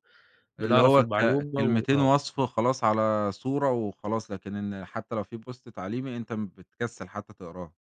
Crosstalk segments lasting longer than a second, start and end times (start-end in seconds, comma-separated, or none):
0.6-2.1